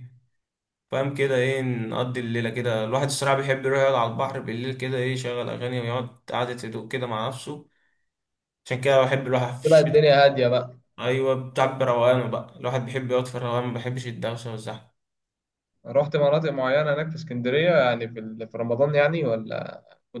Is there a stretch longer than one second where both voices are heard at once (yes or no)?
no